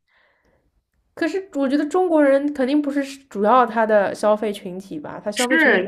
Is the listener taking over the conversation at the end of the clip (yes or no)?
yes